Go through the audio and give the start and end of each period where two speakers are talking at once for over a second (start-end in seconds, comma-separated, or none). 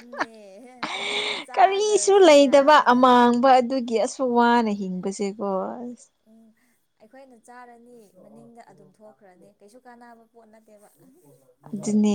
1.6-3.0